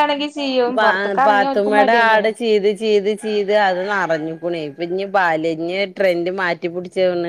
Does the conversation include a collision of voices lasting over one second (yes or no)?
yes